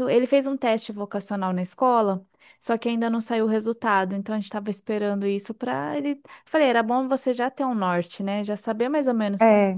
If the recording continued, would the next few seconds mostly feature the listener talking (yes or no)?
no